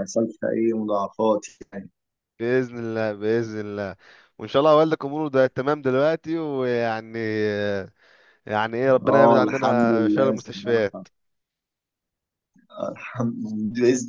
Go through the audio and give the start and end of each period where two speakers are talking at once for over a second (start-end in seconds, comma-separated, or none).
9.1-11.0